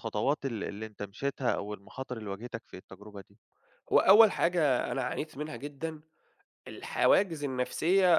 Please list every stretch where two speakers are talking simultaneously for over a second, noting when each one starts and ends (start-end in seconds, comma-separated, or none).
none